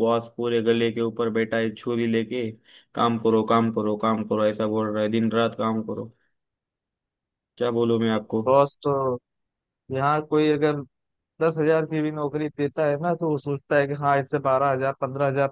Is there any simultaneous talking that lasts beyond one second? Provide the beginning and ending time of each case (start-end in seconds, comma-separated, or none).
none